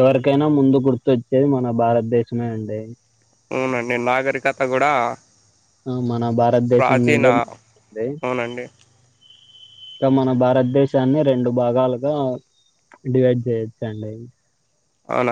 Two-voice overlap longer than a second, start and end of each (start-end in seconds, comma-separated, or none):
none